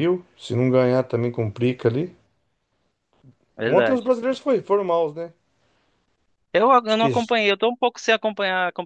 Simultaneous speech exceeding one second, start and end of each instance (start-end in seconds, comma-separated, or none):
none